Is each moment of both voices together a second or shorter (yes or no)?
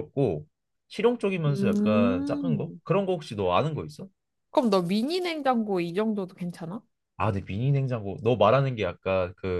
no